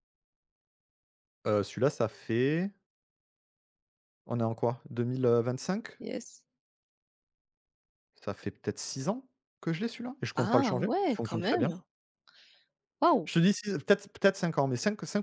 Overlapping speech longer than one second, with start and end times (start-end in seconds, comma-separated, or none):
10.3-11.7